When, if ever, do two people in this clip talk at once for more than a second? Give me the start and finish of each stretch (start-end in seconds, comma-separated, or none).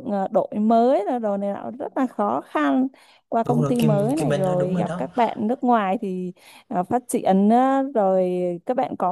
3.5-5.0